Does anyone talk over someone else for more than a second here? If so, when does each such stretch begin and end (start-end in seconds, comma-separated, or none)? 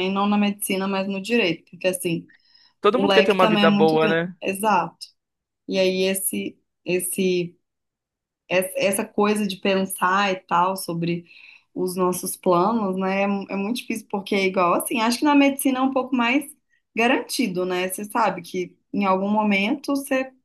2.9-4.3